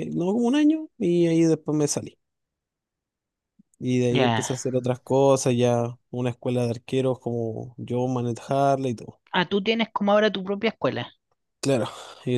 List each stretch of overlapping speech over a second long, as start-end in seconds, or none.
none